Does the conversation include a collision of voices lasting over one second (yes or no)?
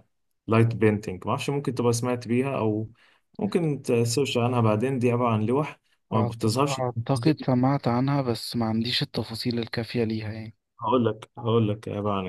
yes